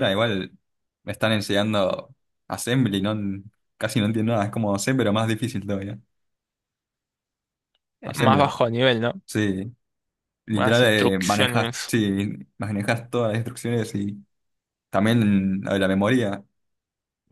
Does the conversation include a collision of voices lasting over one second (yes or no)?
yes